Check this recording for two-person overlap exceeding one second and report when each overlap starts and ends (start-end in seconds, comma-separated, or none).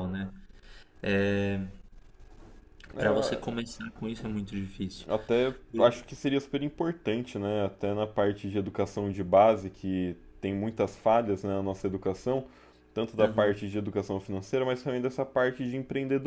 none